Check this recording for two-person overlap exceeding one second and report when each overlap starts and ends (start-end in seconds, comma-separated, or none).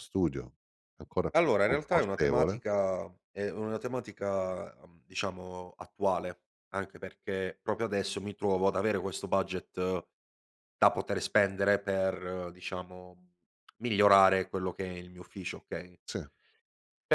1.3-2.6